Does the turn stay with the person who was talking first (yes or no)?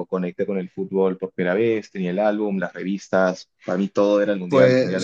yes